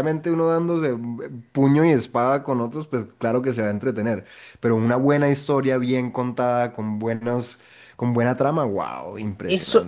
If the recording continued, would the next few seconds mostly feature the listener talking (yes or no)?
yes